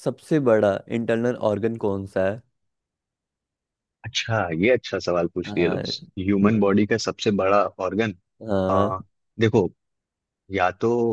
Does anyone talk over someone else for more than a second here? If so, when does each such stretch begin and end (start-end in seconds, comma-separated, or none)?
none